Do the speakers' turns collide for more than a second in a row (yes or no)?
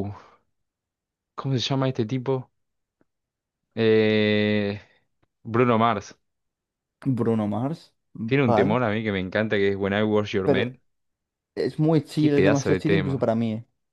yes